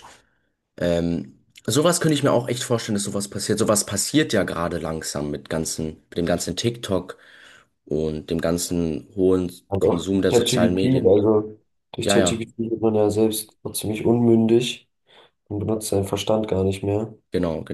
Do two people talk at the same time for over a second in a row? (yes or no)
yes